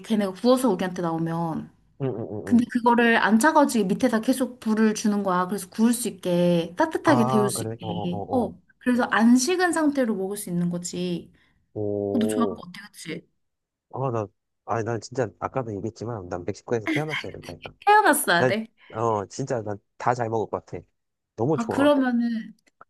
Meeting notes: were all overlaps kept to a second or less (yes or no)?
no